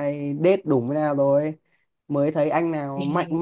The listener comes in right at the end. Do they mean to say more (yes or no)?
no